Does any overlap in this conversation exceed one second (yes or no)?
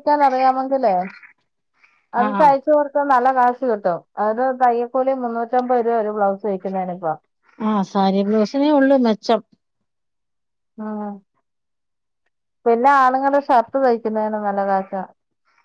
no